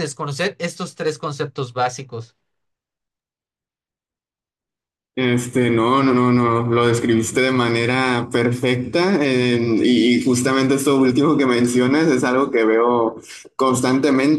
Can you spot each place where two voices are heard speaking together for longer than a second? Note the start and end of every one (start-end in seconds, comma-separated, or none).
none